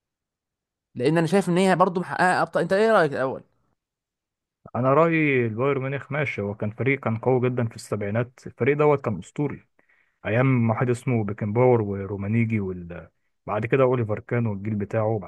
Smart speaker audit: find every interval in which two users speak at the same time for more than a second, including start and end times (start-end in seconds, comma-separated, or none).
none